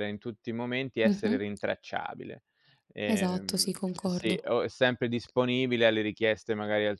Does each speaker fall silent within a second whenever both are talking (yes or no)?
no